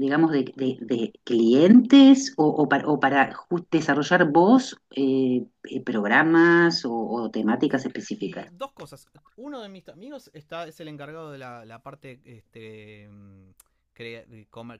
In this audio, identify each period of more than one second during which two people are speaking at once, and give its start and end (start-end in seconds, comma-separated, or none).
none